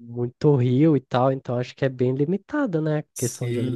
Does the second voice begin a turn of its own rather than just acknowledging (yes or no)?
yes